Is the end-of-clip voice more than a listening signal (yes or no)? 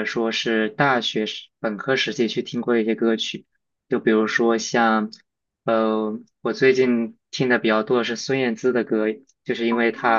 no